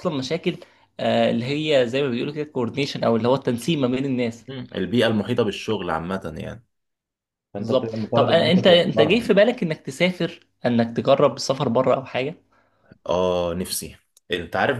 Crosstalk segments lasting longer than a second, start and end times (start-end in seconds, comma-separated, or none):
7.6-9.3